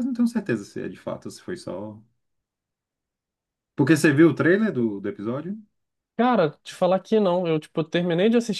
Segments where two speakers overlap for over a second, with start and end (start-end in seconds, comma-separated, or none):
none